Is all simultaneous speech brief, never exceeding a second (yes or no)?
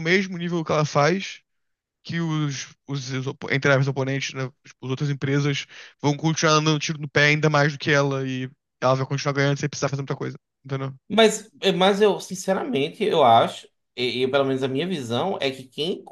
yes